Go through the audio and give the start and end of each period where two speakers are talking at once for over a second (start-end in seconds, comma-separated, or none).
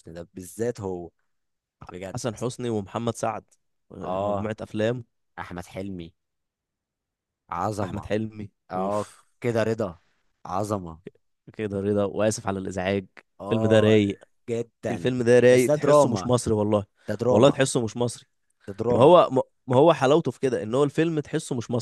14.9-16.3